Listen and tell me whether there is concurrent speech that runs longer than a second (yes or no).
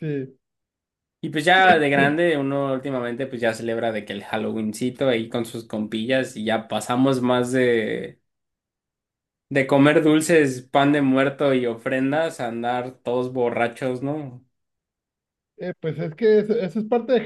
no